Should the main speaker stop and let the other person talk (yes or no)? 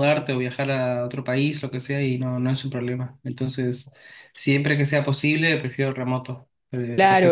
yes